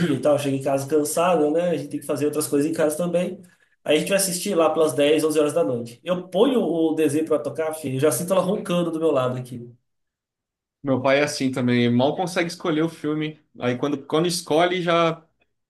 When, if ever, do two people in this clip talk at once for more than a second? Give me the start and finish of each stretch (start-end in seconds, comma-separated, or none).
none